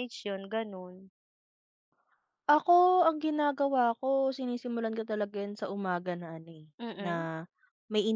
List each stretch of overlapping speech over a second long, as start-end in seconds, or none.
none